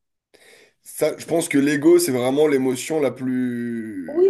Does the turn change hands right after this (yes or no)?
yes